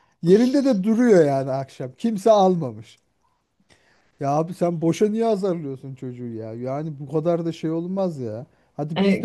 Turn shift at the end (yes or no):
yes